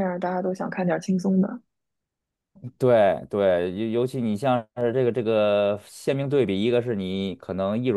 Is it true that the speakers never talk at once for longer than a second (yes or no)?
yes